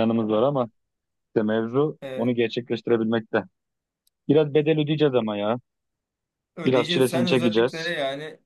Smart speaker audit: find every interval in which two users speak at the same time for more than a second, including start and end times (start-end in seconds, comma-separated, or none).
6.7-7.9